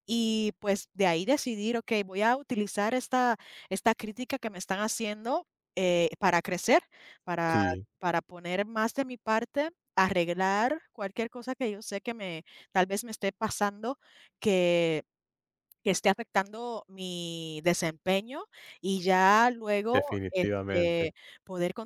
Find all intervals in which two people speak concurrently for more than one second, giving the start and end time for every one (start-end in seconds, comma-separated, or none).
19.9-21.1